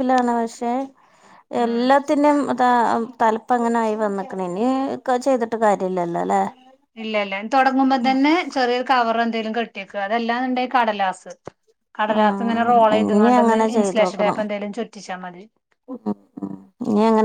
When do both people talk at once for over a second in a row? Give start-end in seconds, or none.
12.2-14.4